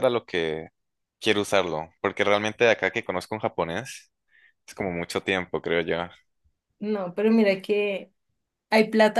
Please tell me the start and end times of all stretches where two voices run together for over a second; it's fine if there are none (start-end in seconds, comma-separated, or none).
none